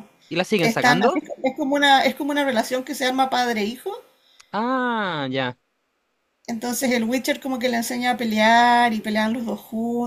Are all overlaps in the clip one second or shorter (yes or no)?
yes